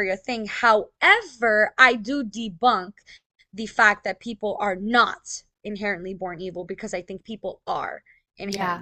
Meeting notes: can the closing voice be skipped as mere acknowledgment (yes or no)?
no